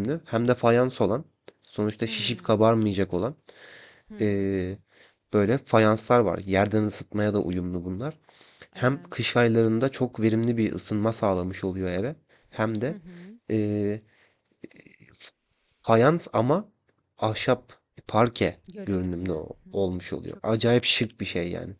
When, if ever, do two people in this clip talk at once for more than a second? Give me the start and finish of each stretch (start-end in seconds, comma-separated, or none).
18.7-20.8